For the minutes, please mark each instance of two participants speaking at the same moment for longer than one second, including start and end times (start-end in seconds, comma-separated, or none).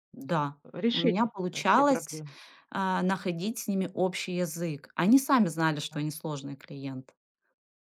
0.7-2.2